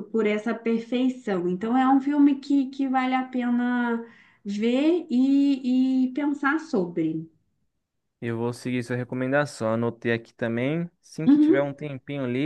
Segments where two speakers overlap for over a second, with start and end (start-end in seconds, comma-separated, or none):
none